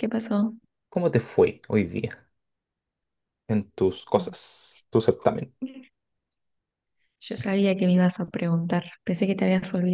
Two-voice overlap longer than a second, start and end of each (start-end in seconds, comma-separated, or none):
none